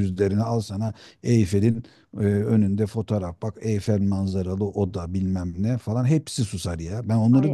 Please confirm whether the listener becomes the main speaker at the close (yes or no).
yes